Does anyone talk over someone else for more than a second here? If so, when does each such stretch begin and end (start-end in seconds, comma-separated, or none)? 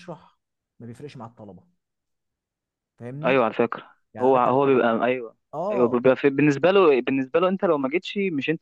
none